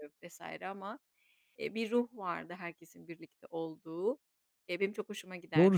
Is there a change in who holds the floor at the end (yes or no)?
yes